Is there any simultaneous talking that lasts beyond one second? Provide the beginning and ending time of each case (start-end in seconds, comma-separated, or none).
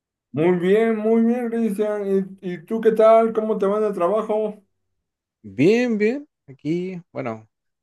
none